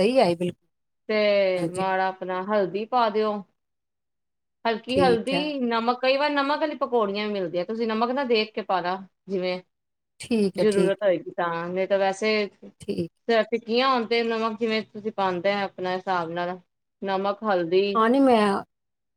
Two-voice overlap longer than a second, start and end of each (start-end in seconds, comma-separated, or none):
none